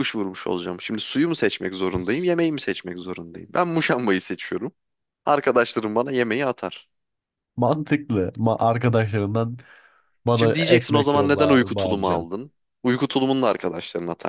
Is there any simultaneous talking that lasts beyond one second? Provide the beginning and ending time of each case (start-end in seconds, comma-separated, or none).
10.3-12.3